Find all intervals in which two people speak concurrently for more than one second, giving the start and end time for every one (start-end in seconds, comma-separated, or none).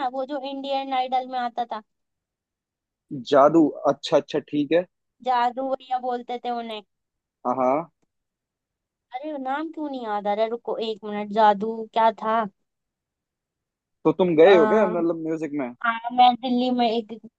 none